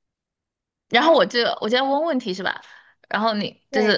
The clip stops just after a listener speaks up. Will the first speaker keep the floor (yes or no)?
no